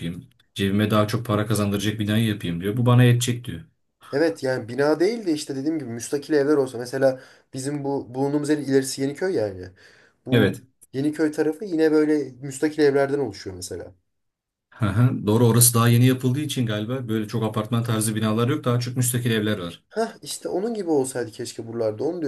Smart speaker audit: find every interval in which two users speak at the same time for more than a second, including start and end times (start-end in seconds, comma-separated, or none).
none